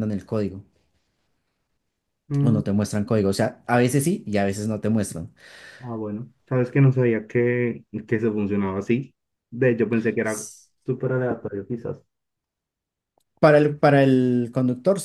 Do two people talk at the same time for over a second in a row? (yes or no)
no